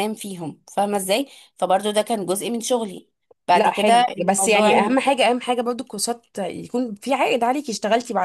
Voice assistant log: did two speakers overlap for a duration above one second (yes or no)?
yes